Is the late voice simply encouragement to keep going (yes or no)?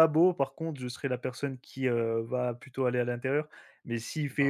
yes